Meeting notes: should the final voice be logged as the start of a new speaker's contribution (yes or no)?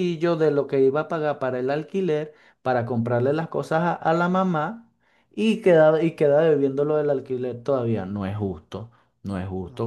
yes